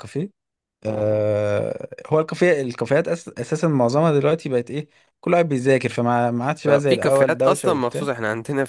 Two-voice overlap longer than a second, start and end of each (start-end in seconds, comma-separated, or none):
6.9-8.1